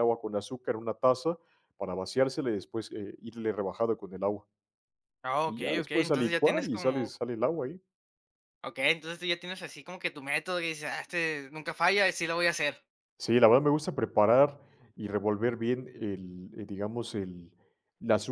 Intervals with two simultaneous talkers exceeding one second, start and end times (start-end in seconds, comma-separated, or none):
5.5-7.1